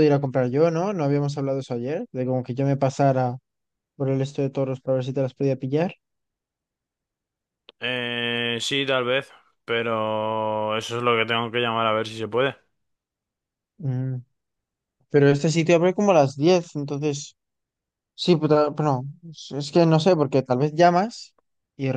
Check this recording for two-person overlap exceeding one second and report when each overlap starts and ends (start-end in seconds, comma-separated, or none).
none